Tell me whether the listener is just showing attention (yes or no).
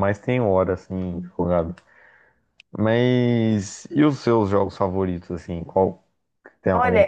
no